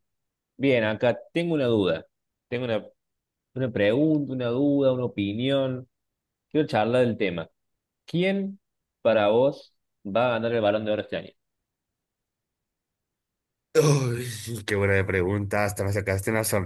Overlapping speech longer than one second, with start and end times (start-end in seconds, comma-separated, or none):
none